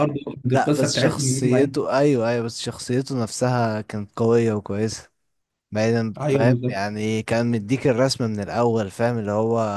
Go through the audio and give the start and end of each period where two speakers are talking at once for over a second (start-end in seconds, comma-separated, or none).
0.5-1.9